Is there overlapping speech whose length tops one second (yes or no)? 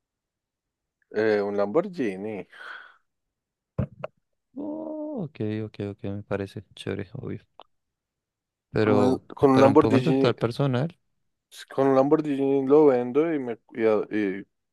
yes